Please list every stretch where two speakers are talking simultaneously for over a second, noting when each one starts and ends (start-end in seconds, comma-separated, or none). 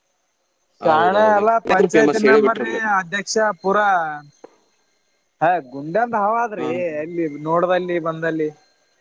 0.8-2.8